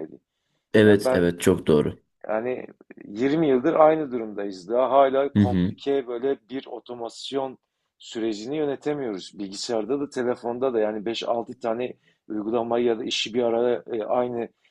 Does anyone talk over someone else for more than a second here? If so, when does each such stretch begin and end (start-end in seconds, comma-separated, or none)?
none